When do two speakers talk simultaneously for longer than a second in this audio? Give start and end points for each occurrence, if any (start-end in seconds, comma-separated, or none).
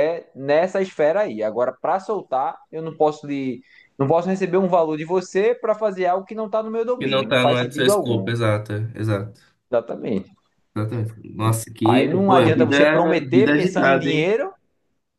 7.0-8.3, 11.8-14.3